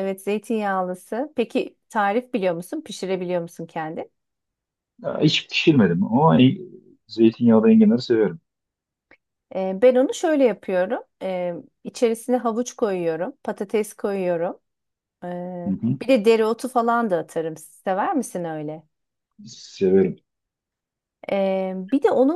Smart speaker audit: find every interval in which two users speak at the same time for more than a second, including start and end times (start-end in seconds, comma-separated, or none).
none